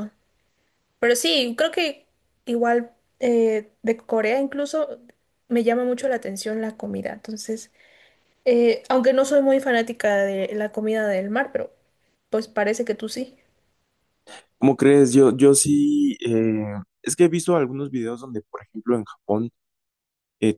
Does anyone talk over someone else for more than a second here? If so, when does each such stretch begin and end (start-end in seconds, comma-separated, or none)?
none